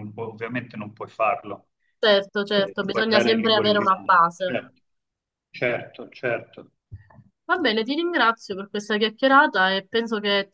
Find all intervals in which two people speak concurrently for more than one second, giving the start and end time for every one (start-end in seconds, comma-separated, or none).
2.5-4.6